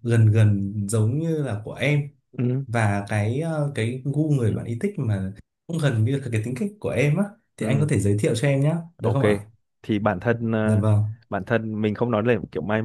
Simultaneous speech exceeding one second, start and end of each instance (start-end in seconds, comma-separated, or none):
none